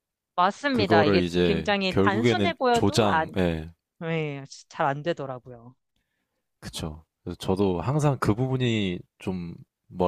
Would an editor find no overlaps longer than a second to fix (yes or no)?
no